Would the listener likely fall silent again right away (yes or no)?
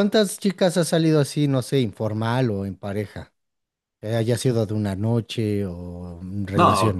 no